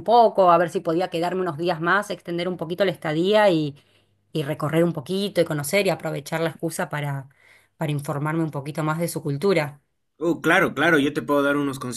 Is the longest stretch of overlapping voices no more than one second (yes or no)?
yes